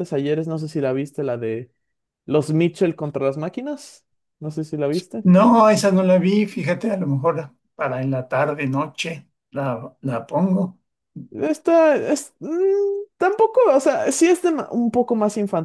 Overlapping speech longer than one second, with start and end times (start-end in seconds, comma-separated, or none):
none